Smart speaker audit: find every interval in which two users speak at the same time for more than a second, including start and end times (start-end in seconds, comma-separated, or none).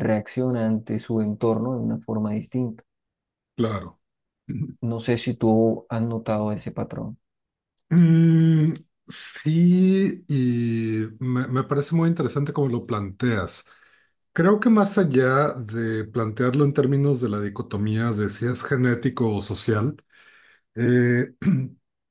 none